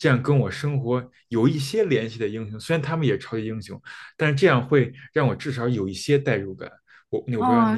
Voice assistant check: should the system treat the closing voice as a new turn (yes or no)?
yes